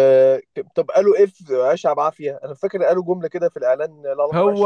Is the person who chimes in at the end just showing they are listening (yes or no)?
no